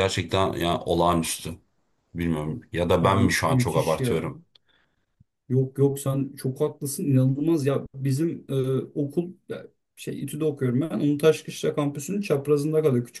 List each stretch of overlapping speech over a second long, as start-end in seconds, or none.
3.0-4.3